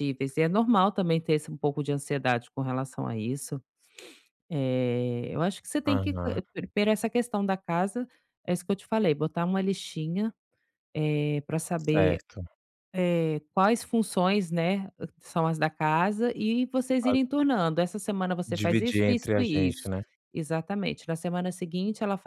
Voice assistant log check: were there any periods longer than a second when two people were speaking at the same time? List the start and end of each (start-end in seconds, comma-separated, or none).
18.4-19.9